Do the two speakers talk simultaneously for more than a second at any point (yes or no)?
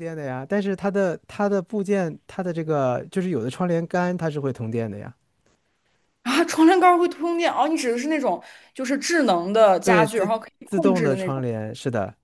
yes